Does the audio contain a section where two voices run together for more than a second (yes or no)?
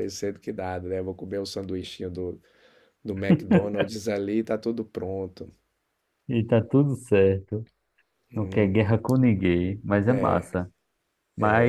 no